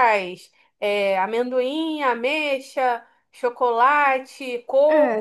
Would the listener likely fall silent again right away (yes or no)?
no